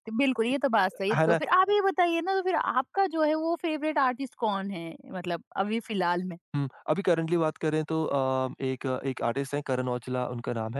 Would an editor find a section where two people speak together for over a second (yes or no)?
no